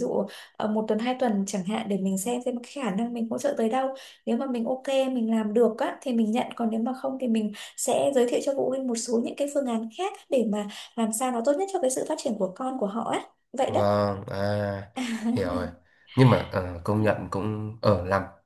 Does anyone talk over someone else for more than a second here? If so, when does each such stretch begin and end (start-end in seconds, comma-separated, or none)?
none